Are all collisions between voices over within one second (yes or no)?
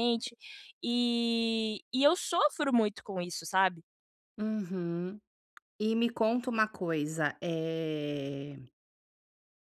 yes